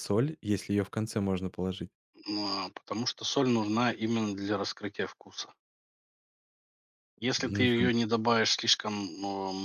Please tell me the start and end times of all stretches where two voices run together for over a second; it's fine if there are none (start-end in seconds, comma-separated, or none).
none